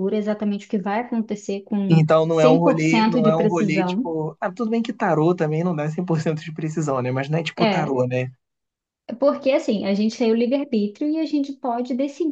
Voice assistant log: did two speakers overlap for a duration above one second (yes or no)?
yes